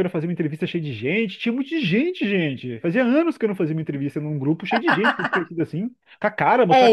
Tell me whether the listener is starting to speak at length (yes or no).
yes